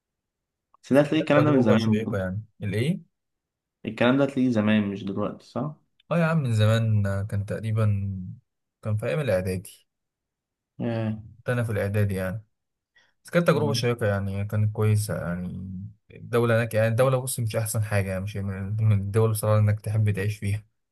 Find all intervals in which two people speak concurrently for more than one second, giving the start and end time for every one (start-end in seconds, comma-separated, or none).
0.9-2.3